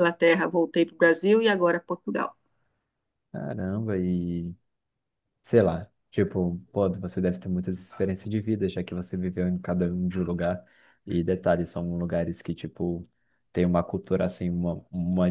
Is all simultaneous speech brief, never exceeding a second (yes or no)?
yes